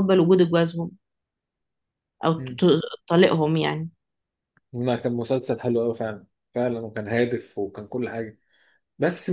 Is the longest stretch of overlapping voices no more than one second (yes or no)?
yes